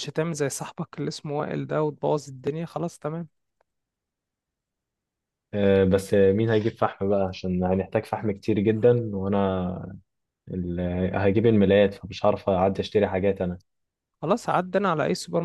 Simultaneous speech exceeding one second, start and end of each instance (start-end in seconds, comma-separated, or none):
none